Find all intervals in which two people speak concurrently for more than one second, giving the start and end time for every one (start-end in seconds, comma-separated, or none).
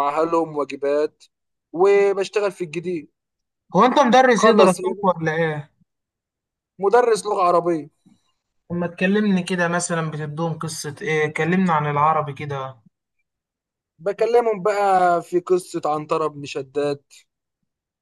none